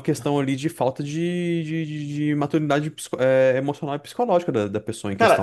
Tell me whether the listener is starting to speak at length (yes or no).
yes